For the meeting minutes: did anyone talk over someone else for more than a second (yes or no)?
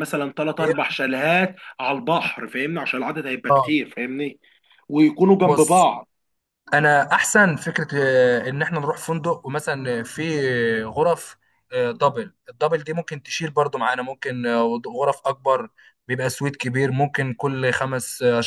no